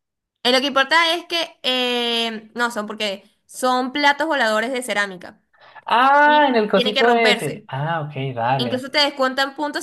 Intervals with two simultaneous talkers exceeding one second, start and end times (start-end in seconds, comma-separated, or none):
6.2-7.6